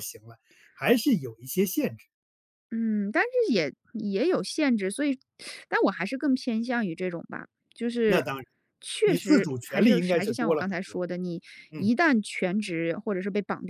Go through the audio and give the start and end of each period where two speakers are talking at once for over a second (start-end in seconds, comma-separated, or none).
9.0-11.0